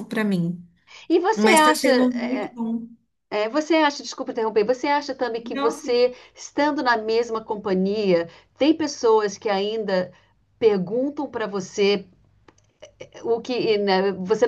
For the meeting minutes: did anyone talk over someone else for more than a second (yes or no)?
no